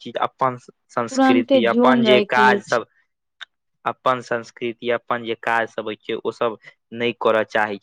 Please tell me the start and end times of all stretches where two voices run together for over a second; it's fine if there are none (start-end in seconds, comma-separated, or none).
1.1-2.8